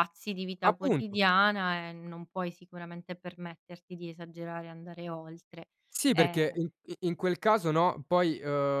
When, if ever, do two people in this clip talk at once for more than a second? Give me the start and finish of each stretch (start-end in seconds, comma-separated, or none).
none